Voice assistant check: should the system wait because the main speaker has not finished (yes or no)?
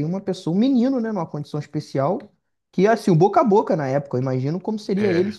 yes